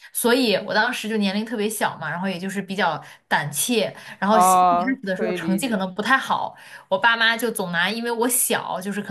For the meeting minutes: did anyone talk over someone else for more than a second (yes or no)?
yes